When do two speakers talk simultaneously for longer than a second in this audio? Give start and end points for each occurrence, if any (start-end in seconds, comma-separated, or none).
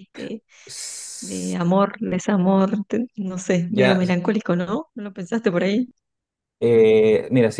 none